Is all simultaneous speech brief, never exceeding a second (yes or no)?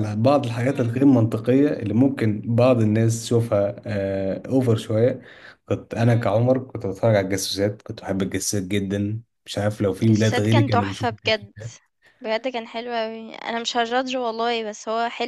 no